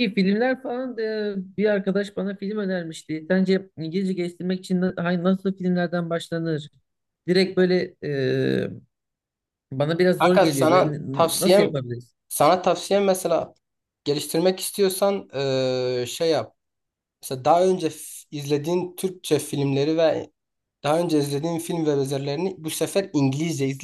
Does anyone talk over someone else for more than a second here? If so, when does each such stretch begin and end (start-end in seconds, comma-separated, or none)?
10.2-11.7